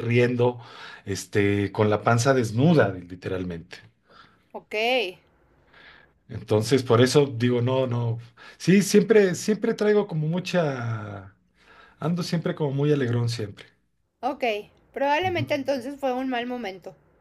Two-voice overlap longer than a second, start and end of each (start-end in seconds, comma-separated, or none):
none